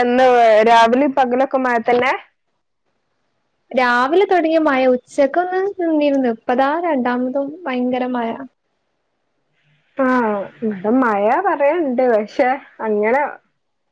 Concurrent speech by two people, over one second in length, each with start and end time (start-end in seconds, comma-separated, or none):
none